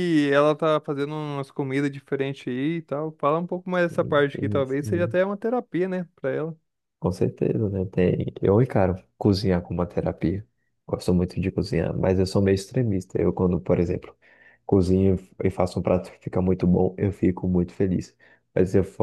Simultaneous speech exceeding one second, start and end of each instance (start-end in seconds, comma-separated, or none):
3.7-5.2